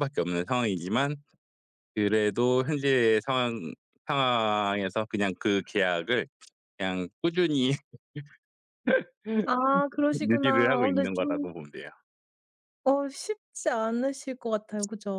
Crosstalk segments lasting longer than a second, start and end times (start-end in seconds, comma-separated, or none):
10.3-11.5